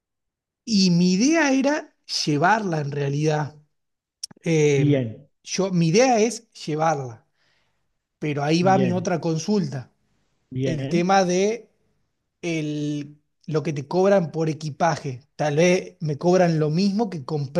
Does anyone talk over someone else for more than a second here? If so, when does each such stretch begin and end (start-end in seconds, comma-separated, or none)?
none